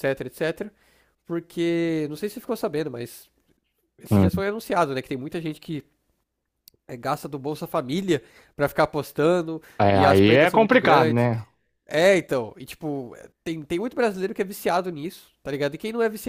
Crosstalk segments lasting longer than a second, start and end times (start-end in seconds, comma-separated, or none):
9.8-11.3